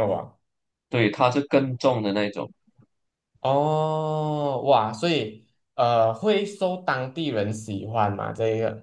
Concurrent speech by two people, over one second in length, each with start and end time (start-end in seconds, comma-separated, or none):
none